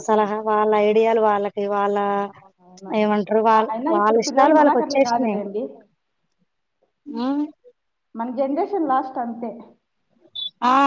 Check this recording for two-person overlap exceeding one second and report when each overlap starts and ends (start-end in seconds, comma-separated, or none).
3.7-5.3